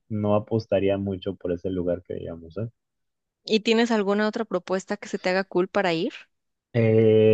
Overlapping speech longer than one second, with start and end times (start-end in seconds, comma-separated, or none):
none